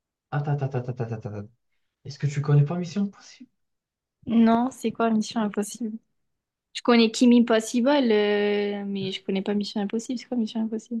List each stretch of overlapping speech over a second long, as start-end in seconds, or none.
none